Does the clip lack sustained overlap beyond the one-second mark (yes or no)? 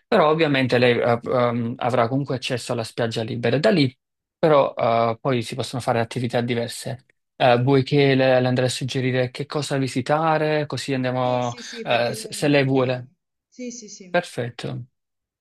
no